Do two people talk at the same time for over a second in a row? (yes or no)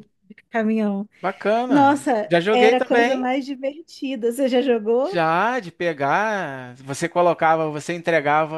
yes